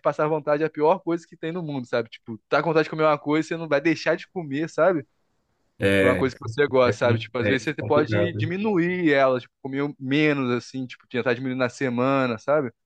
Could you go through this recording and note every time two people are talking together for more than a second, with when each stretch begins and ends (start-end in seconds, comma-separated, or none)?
6.8-8.5